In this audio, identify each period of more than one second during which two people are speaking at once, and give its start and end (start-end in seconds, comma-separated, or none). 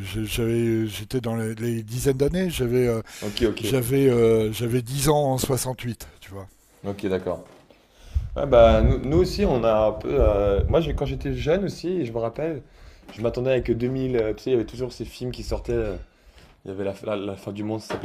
none